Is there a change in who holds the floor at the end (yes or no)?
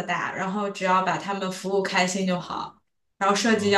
no